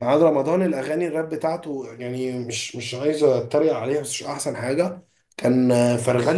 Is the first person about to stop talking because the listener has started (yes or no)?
no